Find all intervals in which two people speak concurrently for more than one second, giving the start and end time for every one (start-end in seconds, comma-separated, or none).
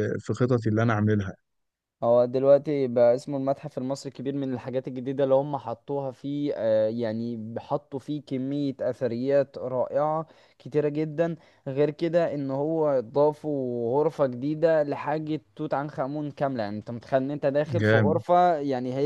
none